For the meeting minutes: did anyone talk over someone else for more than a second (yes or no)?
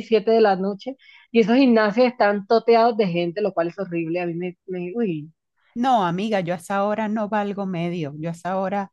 no